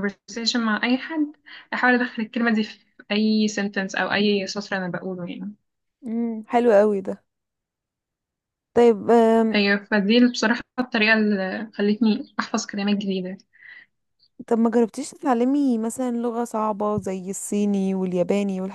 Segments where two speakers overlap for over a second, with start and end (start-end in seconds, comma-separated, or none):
none